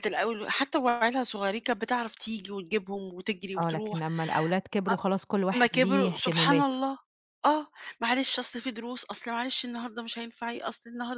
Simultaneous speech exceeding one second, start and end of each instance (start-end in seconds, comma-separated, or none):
5.5-6.8